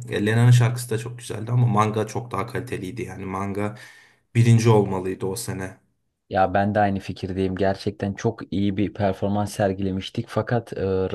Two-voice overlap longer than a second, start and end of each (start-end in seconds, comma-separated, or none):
none